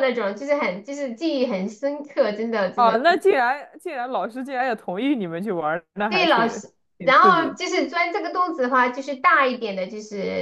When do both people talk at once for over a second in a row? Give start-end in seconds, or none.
6.1-7.6